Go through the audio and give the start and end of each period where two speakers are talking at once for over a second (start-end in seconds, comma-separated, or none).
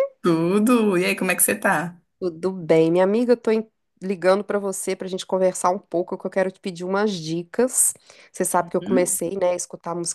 none